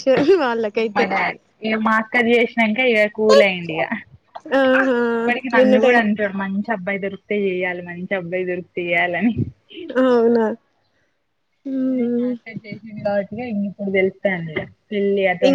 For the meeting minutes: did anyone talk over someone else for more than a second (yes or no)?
no